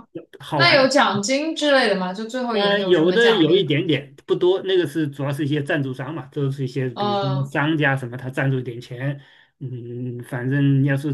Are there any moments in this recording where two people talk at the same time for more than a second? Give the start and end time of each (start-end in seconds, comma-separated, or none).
2.5-3.7